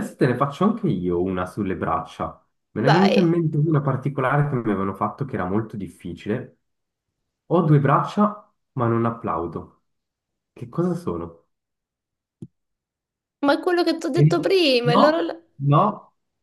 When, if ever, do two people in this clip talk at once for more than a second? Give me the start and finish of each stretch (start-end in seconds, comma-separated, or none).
none